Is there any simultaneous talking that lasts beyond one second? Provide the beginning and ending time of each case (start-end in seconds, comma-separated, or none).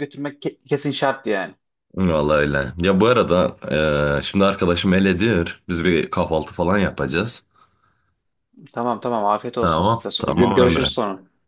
9.6-10.9